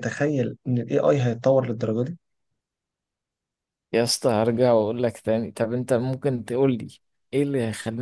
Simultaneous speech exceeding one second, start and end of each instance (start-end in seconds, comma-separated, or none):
none